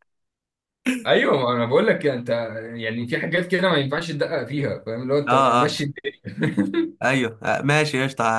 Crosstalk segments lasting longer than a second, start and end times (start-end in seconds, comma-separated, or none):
none